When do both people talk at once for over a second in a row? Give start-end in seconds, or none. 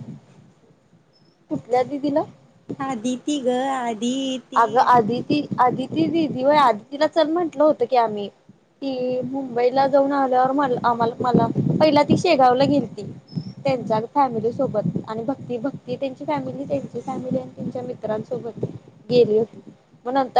none